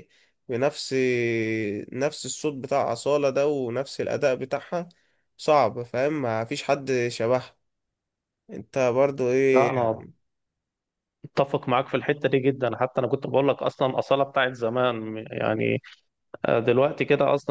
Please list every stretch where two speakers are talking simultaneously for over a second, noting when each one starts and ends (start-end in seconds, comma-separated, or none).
none